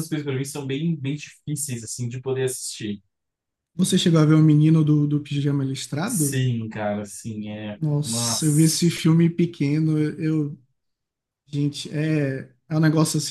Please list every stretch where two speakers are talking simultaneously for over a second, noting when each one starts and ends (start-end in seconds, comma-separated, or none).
7.8-9.1